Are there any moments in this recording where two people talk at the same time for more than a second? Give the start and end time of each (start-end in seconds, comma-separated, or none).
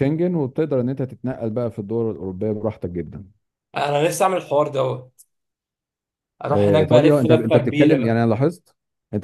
6.5-8.2